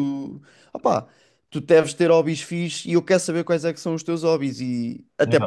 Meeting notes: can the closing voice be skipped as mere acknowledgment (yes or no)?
yes